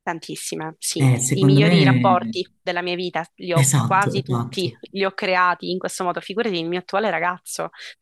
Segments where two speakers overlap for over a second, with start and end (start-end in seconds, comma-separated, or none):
1.0-2.4, 3.5-4.8